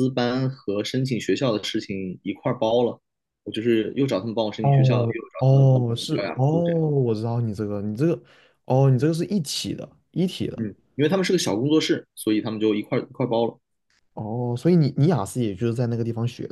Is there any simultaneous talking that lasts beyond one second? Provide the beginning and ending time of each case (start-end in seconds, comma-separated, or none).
4.6-6.5